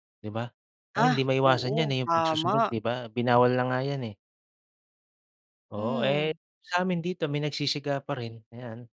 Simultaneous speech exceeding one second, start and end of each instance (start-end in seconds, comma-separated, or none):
1.0-2.7